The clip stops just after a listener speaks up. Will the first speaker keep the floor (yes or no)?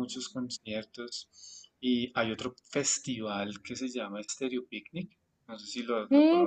no